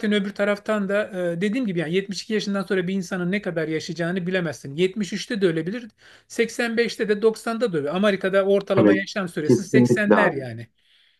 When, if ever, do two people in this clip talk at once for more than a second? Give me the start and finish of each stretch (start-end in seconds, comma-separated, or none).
8.8-10.4